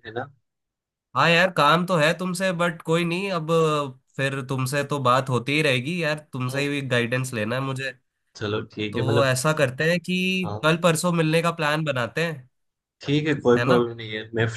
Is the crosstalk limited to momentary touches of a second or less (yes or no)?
yes